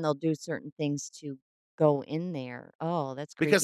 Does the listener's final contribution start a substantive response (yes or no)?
yes